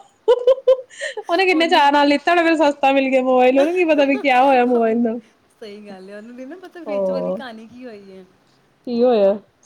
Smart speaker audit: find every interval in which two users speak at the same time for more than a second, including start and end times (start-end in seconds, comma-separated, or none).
none